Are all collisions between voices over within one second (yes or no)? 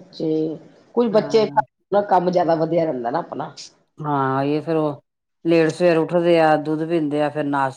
yes